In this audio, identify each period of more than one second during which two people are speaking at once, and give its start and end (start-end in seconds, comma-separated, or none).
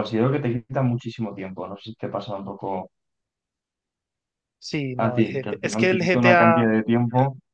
5.0-6.6